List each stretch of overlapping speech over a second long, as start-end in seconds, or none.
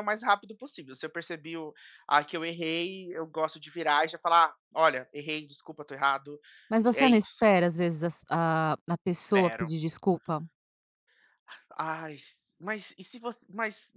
none